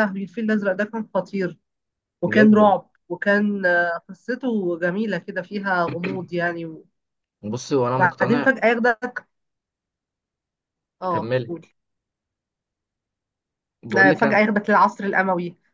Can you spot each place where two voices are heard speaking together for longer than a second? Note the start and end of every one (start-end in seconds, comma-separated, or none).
none